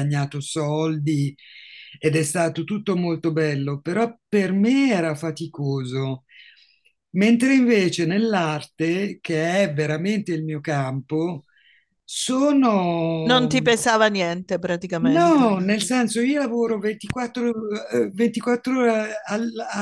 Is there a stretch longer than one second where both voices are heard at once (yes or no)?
no